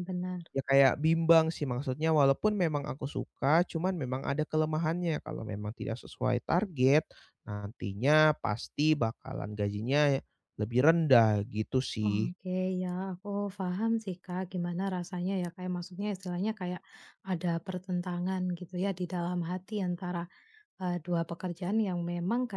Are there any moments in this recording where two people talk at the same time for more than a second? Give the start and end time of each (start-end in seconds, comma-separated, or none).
none